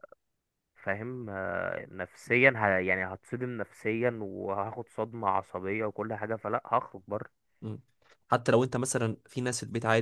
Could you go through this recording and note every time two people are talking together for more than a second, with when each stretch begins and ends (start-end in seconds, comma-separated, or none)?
none